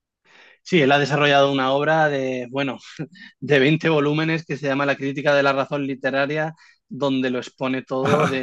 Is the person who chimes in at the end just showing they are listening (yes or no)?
no